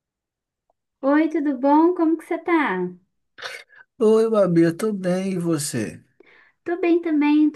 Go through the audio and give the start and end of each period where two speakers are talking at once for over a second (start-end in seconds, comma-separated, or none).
none